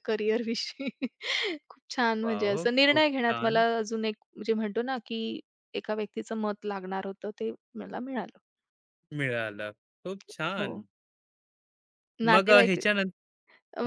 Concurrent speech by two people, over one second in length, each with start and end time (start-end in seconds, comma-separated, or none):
2.2-3.6